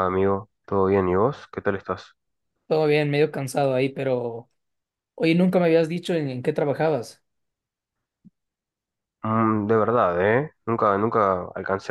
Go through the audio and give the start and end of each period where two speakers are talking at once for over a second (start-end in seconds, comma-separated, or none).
none